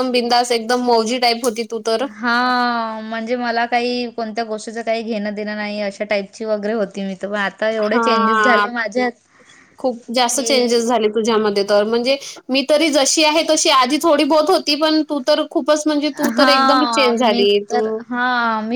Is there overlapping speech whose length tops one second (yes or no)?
yes